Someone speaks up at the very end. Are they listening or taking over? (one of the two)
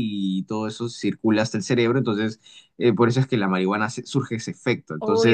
taking over